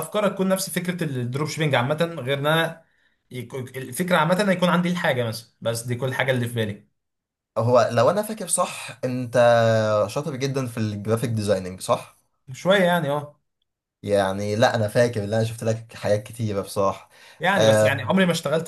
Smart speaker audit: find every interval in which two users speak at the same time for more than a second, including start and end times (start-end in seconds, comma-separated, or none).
none